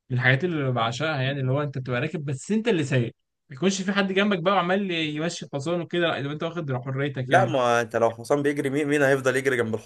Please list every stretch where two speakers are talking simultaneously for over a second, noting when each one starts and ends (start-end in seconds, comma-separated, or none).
none